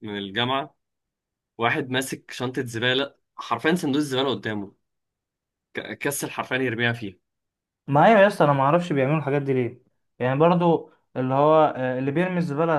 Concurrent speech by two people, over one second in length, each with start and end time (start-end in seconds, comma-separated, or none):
none